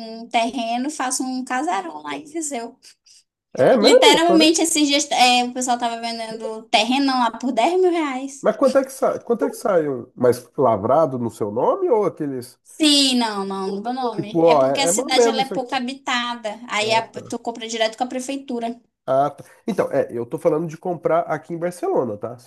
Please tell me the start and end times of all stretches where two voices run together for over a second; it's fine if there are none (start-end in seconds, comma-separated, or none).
14.1-15.8